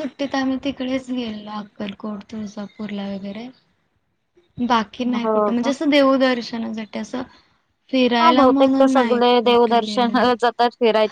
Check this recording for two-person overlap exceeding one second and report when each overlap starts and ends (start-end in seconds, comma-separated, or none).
8.2-10.2